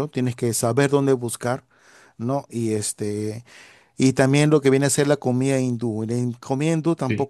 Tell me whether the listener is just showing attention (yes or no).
yes